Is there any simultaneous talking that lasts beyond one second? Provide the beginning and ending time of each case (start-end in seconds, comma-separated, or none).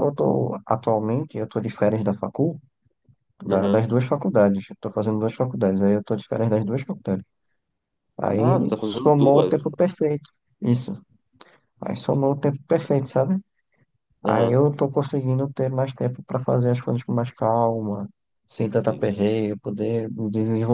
8.4-9.7